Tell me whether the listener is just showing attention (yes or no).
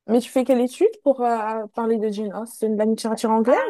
no